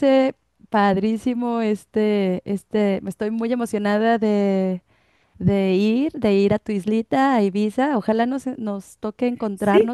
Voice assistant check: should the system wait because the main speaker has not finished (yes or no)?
no